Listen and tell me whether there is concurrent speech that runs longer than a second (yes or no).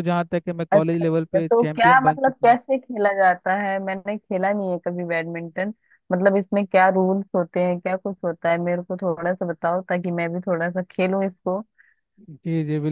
yes